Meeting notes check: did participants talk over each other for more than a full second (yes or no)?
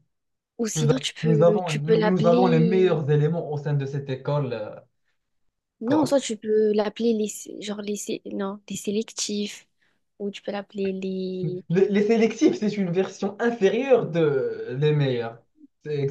yes